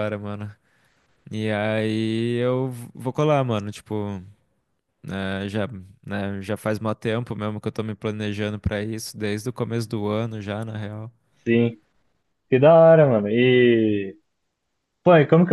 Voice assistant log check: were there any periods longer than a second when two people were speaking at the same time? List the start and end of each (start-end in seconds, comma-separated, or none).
none